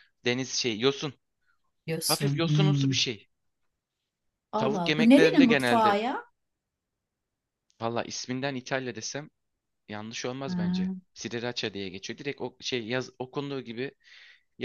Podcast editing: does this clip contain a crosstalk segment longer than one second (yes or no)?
yes